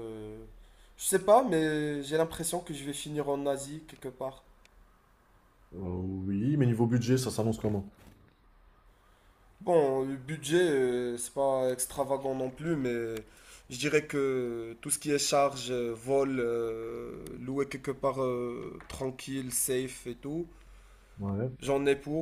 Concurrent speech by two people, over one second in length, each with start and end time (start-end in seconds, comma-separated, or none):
none